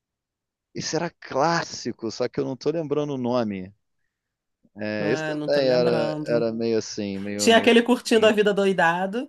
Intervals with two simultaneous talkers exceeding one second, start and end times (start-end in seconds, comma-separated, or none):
5.0-6.5